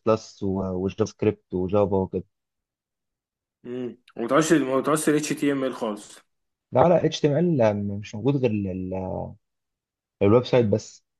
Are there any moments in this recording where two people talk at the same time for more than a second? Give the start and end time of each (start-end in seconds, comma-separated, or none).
none